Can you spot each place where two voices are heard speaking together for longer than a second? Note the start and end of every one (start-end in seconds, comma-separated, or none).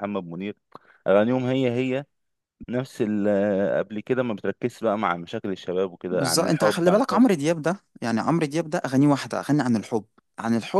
6.1-7.3